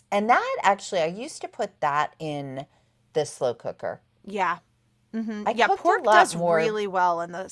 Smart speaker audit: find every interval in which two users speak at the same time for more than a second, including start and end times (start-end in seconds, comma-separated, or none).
5.4-6.8